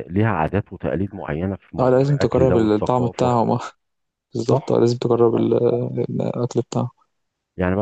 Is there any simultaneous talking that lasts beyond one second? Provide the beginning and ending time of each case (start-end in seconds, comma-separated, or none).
1.8-3.3